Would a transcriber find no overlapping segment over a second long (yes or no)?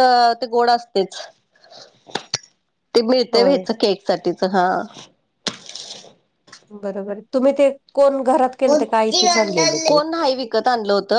no